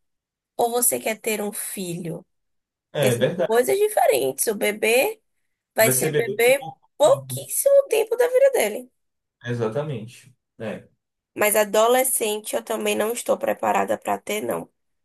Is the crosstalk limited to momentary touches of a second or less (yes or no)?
no